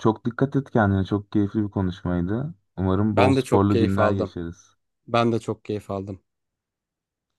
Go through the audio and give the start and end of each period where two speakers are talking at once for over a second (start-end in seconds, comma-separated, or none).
3.1-4.4